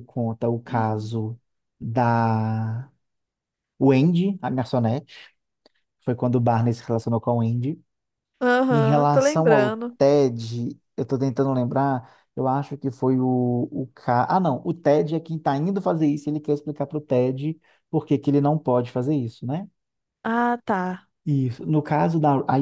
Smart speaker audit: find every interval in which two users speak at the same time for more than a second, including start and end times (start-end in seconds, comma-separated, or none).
8.7-9.9